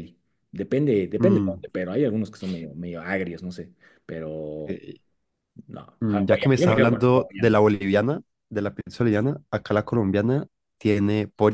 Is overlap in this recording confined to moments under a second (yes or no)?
no